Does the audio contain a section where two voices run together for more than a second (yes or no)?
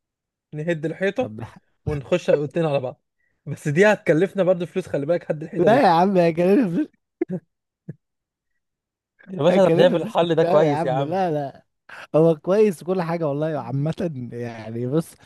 yes